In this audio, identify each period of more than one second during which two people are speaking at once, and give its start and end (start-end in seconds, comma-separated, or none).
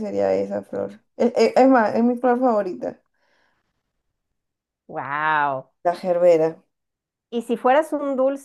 none